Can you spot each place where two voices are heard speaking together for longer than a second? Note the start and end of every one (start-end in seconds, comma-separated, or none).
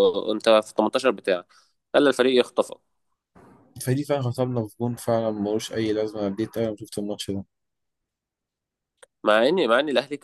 none